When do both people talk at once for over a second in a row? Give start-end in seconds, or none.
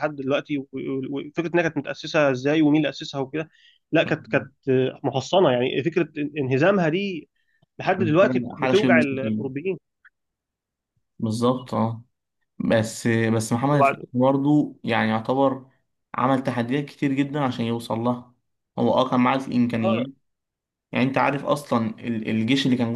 7.9-9.4